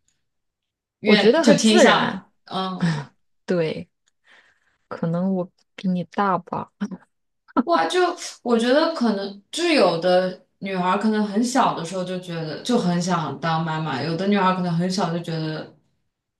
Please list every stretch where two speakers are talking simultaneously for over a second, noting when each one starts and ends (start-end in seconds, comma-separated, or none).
1.0-2.3